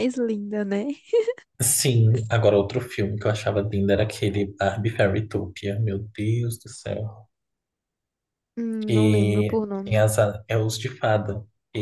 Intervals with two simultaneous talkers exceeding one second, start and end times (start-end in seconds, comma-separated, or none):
8.9-10.2